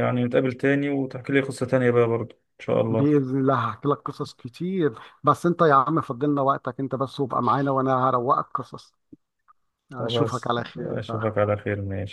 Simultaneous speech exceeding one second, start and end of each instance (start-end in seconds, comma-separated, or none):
10.0-11.3